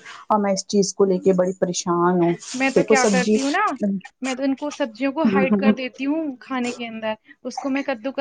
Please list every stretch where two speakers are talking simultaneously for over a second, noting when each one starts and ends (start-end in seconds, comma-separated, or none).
none